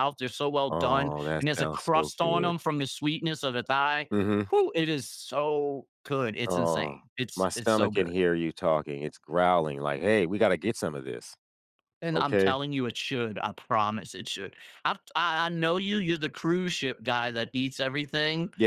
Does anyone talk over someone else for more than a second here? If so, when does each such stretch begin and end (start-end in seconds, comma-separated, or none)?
0.7-2.5, 6.5-8.1